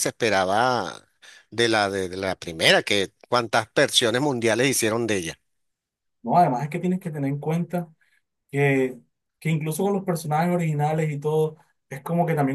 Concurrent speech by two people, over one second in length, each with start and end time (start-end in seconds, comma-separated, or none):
none